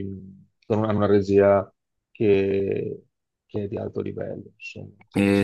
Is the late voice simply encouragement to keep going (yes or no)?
no